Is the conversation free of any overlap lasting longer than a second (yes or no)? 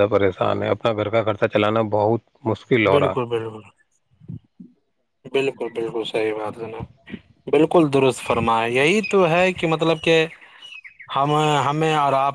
yes